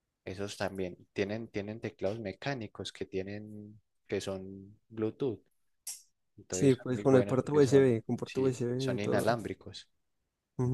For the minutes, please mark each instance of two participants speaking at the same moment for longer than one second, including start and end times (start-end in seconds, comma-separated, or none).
6.5-9.3